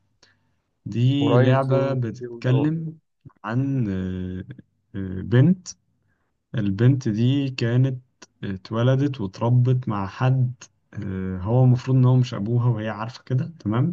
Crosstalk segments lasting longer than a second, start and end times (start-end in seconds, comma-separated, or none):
1.2-2.8